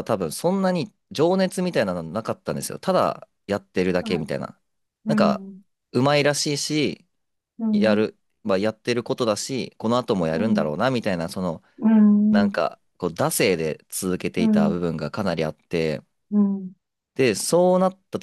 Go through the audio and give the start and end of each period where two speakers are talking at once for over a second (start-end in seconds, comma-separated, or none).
none